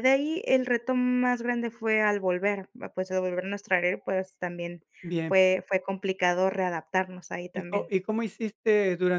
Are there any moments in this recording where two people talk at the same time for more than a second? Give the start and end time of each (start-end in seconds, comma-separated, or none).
none